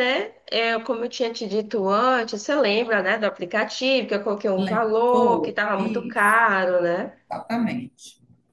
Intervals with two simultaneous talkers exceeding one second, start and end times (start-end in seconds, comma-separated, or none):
4.6-6.4